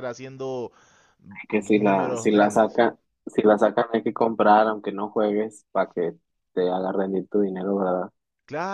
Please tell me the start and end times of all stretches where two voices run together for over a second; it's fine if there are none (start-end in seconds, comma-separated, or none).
1.5-2.8